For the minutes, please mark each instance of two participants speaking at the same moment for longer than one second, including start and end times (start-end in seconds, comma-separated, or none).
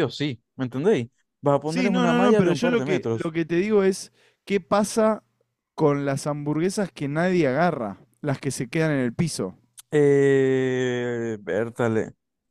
1.6-3.3